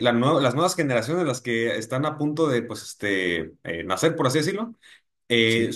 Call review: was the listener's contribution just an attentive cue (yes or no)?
yes